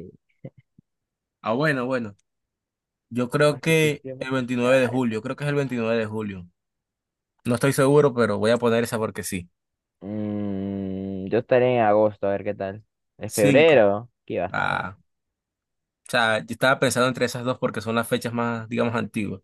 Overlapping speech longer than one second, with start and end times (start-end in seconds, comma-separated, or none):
3.4-5.2